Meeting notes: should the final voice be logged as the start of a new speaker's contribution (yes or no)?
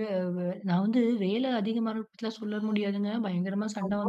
no